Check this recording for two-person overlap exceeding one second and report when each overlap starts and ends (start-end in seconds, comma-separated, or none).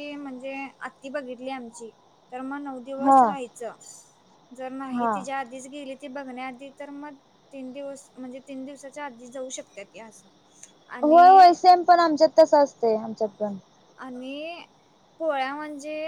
none